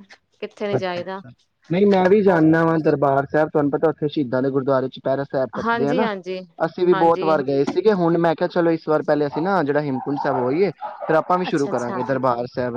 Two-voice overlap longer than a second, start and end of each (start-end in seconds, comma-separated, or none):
none